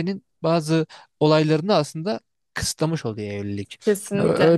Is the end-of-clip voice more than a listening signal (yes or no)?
no